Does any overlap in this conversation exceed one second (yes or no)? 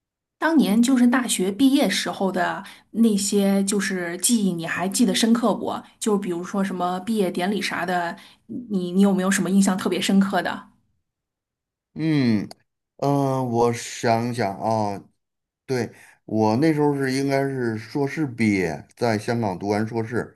no